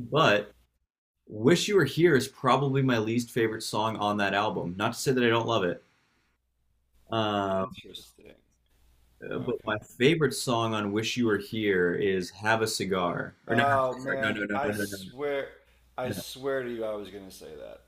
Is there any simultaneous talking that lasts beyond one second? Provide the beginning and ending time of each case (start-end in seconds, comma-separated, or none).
13.5-15.0